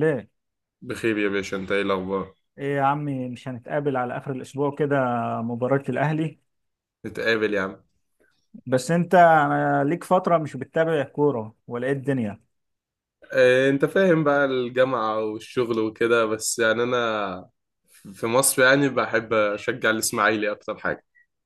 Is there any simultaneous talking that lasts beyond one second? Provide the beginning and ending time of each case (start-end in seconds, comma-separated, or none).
none